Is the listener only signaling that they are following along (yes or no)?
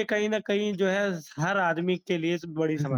no